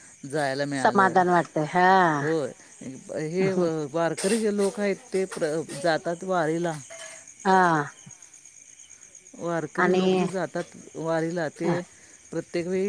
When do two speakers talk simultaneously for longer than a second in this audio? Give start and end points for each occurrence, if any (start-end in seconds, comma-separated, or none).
none